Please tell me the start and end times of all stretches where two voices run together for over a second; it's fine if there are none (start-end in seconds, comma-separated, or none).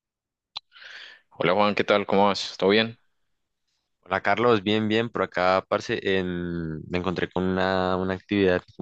none